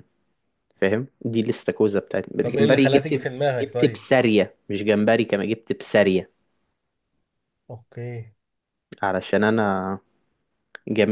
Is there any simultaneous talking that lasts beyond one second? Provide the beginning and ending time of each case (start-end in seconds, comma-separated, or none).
2.4-4.0